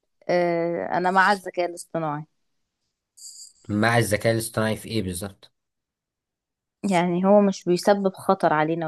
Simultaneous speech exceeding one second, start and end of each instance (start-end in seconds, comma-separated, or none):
none